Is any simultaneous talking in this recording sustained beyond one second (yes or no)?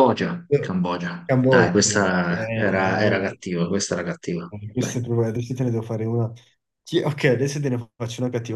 yes